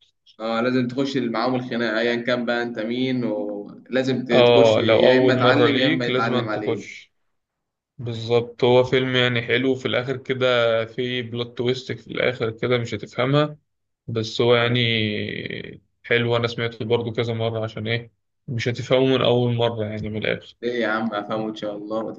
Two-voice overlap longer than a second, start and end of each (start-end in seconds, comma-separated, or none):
4.3-7.0